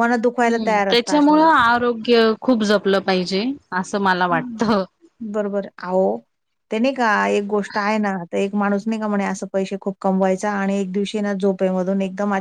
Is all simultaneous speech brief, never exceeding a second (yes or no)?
yes